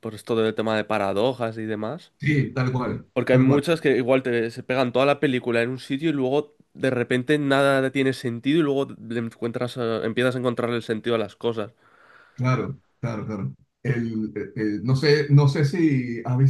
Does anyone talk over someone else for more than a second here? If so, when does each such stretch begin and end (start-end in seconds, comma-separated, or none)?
none